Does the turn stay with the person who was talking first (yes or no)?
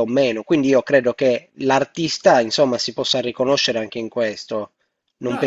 no